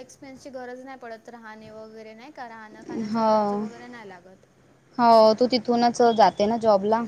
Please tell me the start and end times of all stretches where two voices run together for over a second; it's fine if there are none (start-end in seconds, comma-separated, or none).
none